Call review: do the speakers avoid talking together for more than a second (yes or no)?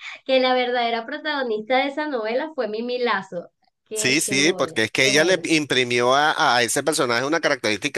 no